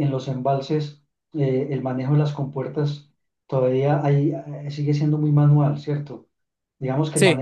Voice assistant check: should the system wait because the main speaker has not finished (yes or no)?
yes